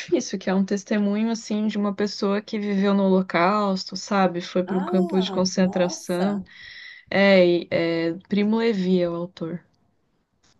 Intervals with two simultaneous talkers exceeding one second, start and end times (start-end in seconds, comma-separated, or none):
4.7-6.4